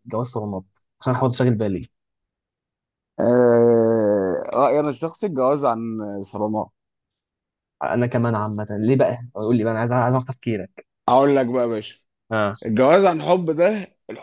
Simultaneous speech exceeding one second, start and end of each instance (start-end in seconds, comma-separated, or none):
none